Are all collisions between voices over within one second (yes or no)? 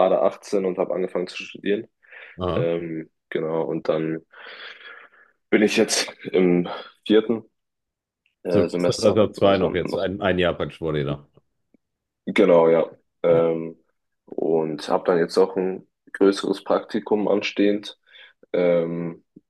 no